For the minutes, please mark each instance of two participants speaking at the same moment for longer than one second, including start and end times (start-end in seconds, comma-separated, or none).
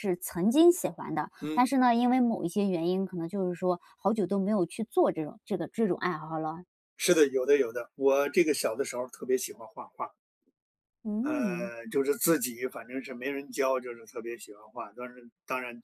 none